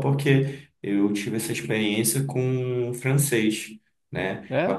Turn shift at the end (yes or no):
no